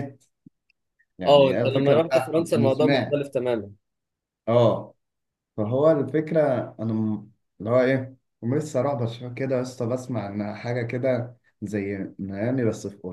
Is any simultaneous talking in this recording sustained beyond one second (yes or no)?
yes